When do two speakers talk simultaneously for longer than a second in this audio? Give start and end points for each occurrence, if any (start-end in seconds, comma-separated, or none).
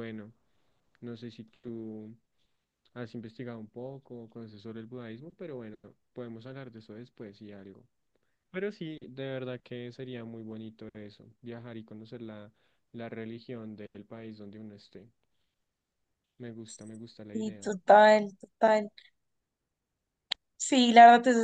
none